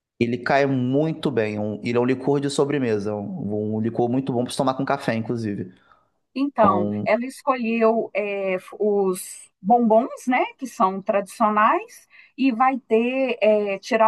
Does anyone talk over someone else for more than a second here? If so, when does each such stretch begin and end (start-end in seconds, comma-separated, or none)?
none